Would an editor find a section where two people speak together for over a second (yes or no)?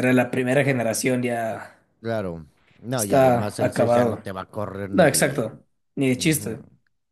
yes